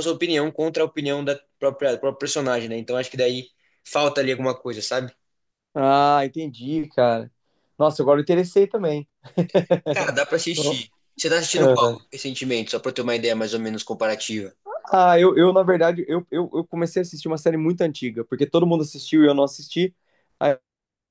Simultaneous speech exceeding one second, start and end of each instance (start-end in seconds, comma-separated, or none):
none